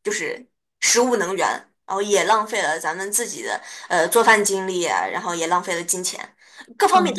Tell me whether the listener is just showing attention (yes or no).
no